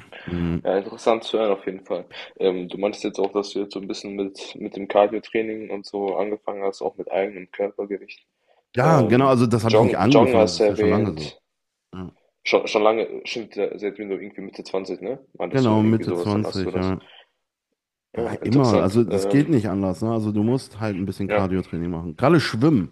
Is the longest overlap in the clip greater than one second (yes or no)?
yes